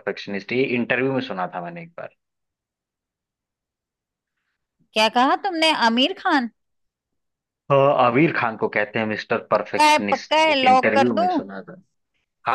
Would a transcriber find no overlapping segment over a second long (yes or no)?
no